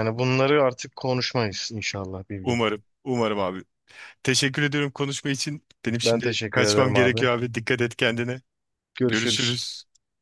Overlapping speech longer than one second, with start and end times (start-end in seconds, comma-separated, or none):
6.0-7.3